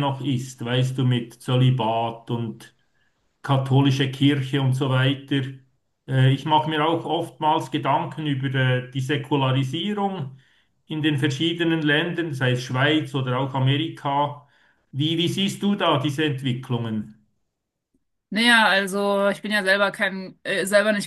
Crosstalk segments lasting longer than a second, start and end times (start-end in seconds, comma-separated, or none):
none